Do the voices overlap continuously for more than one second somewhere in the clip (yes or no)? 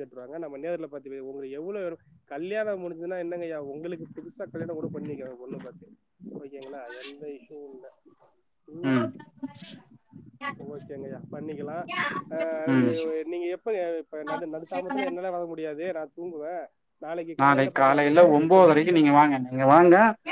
yes